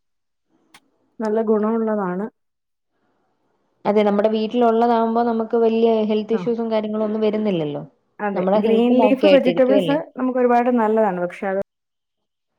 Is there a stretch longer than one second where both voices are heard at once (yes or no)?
yes